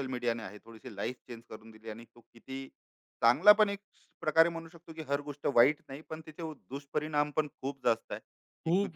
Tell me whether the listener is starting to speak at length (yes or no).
yes